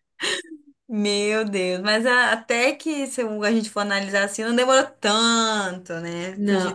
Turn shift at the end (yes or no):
yes